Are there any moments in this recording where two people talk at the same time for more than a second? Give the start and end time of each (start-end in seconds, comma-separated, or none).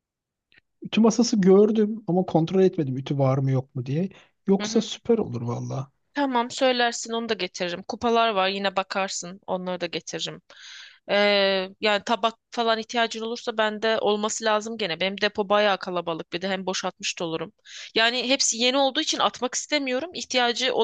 none